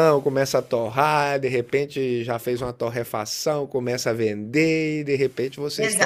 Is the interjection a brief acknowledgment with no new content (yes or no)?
no